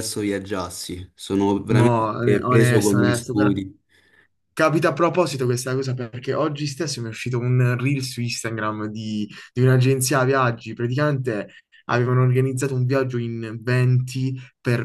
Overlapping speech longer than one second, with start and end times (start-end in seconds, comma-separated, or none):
1.7-3.6